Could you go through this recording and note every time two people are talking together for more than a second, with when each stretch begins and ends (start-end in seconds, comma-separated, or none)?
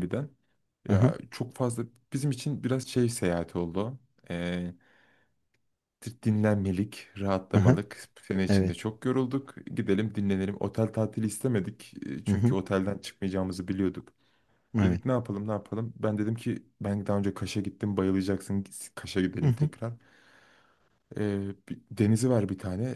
none